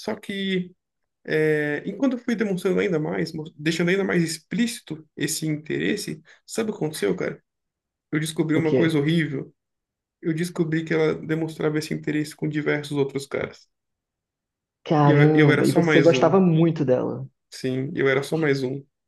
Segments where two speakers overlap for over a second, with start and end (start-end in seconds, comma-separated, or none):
15.1-16.4